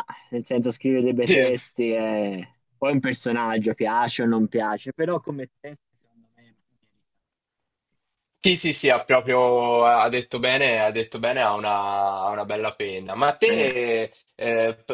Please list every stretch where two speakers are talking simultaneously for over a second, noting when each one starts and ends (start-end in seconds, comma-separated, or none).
none